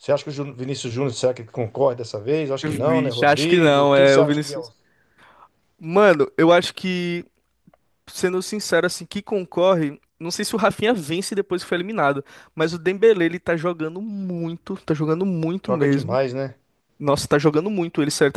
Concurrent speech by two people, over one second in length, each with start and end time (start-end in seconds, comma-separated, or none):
2.6-4.7